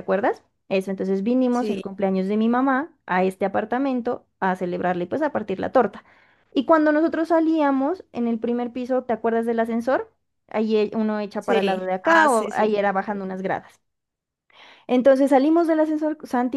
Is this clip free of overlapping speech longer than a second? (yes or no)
no